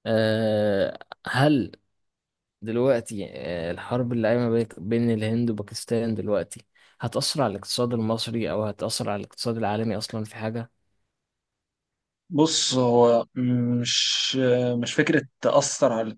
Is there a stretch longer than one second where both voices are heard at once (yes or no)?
no